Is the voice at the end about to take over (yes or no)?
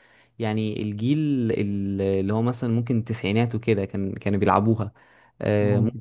no